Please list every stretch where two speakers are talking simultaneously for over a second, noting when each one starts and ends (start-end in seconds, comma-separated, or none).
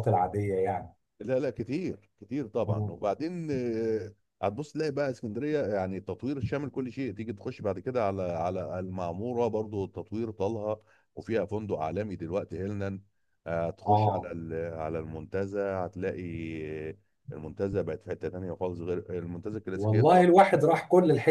none